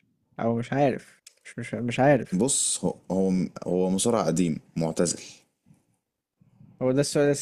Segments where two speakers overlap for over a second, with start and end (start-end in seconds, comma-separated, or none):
none